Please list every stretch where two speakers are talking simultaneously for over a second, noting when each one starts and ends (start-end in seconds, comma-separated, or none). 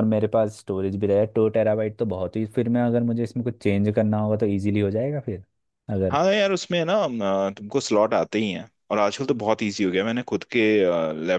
none